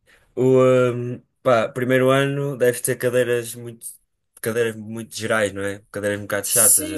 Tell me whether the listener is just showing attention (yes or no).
no